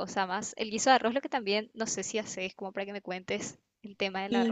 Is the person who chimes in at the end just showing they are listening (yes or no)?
no